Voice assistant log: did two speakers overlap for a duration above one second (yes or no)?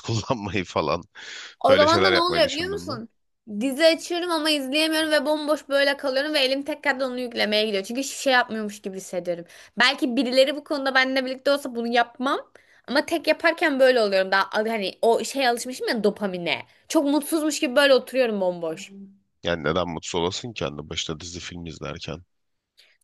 yes